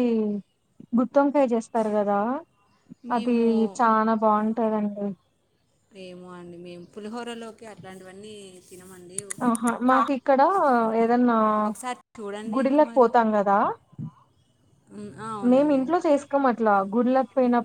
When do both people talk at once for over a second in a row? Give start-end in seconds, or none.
none